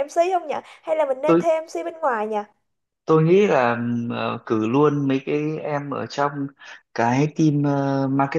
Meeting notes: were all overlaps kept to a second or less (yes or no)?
yes